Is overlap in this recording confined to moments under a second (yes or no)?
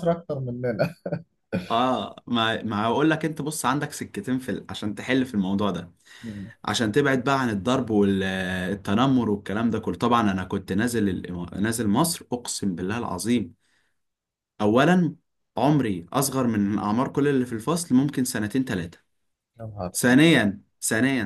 yes